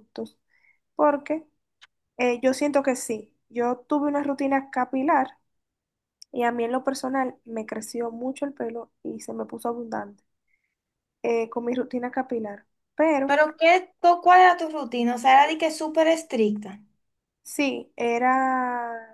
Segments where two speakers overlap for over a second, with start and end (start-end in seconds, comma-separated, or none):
none